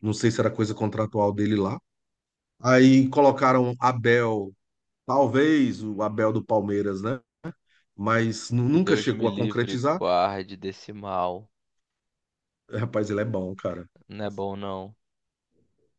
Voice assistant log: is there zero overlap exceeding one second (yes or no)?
no